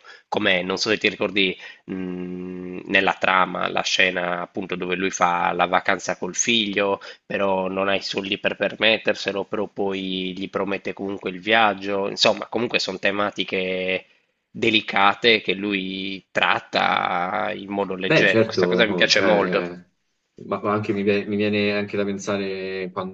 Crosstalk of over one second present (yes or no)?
yes